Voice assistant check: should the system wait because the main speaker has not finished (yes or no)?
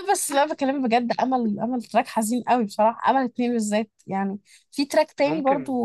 yes